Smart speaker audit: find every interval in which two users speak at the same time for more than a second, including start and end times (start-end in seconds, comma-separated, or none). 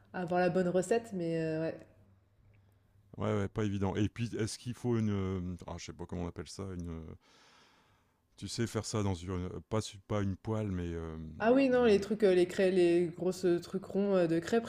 none